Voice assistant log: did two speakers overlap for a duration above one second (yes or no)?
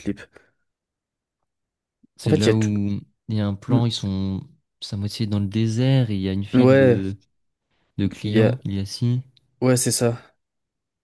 no